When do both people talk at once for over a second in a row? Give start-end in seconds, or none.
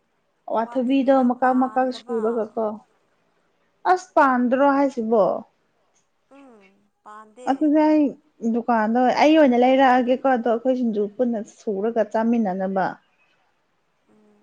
0.6-2.2